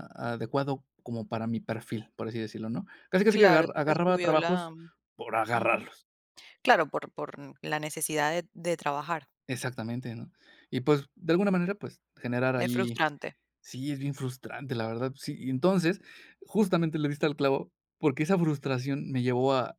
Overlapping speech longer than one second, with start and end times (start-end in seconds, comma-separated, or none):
3.3-4.7